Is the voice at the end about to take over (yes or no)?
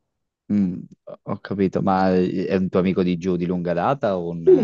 yes